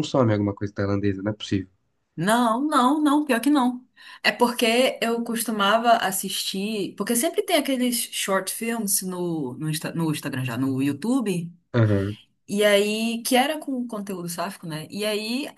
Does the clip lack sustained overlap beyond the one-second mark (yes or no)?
yes